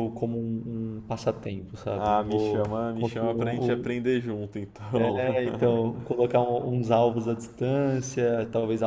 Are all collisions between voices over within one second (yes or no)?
no